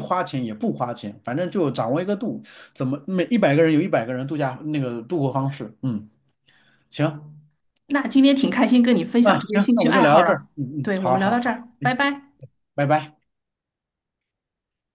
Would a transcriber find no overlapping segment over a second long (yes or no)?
no